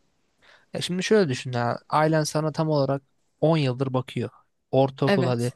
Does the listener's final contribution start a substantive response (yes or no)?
no